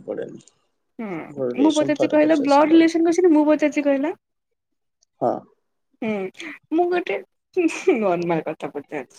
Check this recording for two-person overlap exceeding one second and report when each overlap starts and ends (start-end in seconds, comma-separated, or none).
1.3-2.9